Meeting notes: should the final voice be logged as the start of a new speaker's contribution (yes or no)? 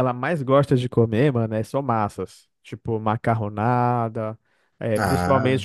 no